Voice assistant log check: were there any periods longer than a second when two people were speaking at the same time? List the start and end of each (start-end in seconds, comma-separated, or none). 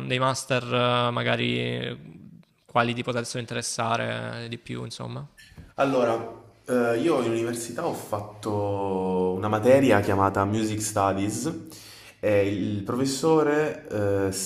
none